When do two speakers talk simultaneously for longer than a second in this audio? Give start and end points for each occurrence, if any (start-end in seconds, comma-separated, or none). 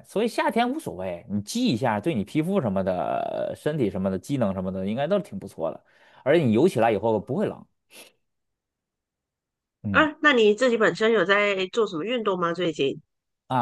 none